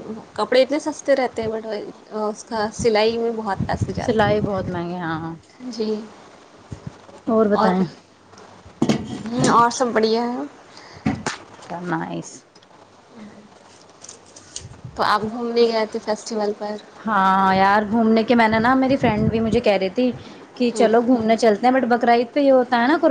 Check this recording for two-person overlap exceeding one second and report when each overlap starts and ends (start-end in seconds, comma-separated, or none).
4.0-5.3